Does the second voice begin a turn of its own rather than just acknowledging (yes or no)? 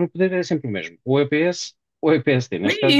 yes